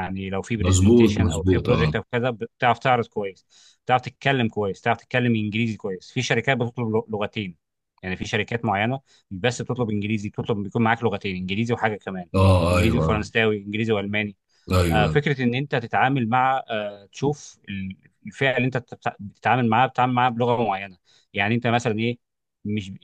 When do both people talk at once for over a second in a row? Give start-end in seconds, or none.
0.6-1.9